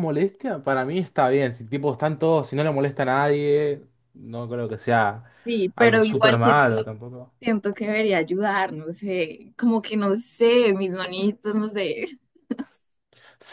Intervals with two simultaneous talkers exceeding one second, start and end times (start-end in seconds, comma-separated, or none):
5.8-7.0